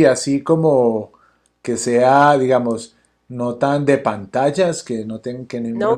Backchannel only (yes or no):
no